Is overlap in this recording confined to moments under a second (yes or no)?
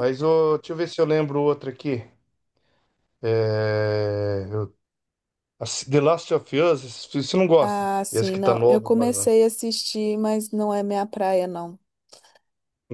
no